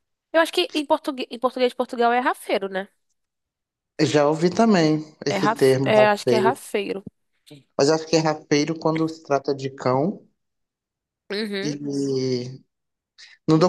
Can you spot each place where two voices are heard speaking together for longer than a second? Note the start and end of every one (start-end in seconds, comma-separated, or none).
5.3-6.6